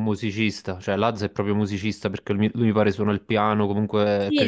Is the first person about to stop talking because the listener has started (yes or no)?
yes